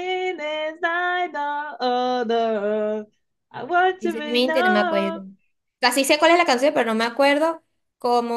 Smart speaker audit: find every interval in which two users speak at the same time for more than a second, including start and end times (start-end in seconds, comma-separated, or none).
4.0-5.2